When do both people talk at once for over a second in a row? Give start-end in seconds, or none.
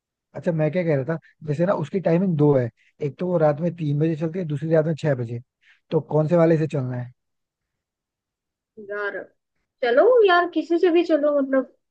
none